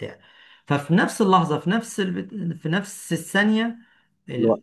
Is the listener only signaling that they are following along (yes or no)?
yes